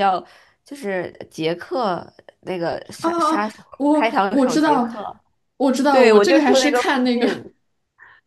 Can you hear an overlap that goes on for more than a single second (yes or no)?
yes